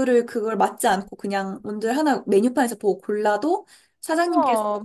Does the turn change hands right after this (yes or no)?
no